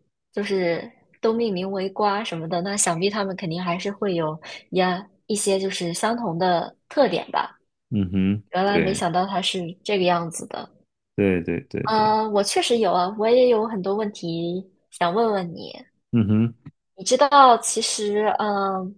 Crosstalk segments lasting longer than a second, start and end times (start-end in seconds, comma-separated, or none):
none